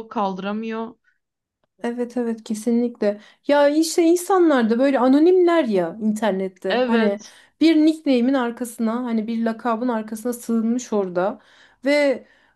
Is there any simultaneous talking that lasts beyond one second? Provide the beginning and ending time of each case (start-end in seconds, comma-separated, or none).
none